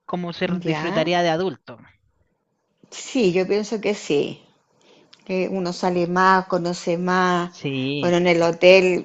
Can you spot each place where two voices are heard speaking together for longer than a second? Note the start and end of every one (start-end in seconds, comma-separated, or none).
none